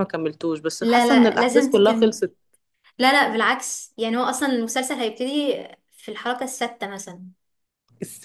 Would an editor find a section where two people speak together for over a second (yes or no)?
yes